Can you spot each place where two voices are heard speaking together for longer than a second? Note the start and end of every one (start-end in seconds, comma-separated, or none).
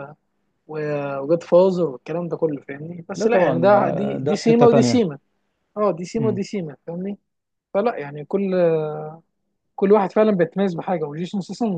3.2-5.0